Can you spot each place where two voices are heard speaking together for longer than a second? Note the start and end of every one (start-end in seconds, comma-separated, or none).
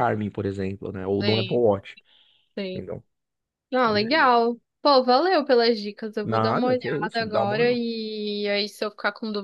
6.2-7.8